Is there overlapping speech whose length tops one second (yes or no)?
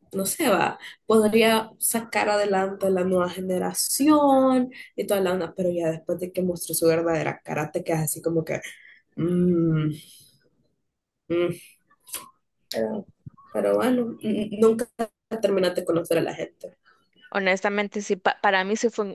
no